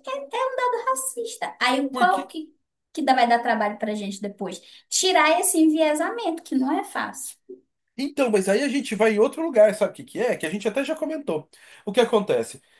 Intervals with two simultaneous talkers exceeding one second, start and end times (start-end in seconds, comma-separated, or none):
none